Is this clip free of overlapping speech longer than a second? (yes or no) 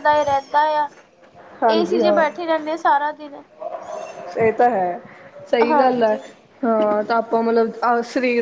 yes